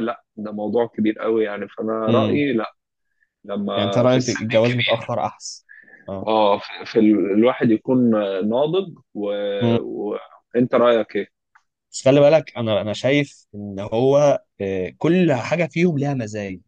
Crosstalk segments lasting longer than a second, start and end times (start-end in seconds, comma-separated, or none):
3.7-5.1